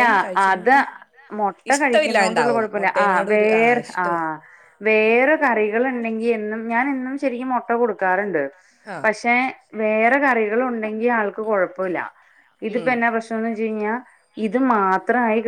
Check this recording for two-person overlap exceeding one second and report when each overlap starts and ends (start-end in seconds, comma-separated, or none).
1.7-4.1